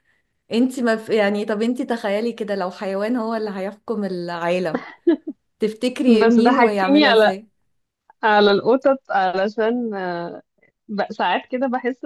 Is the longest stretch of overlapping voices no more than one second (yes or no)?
no